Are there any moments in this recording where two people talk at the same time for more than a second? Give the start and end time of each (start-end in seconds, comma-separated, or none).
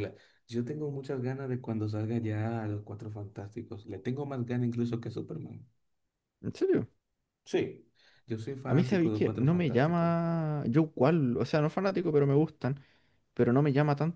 8.7-10.1